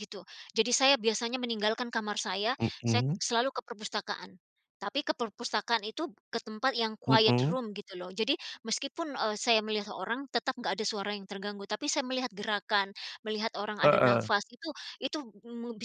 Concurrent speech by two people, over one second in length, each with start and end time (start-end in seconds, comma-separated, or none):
none